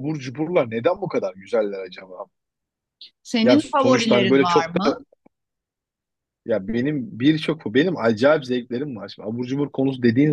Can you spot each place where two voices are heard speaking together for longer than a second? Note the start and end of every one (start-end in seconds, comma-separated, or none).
3.4-5.0